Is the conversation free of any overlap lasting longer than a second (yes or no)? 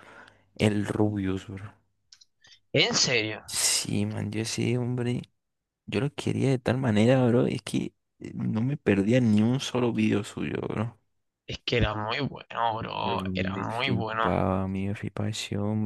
no